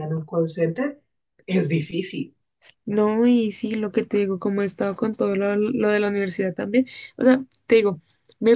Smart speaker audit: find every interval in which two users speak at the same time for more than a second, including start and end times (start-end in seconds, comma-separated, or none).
none